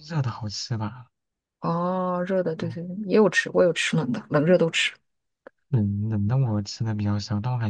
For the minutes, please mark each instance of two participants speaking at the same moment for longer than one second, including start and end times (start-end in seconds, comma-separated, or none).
none